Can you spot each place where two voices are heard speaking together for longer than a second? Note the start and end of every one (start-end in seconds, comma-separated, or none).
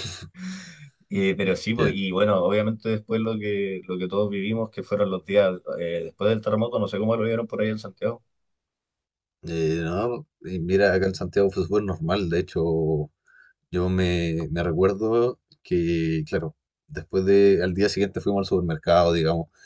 none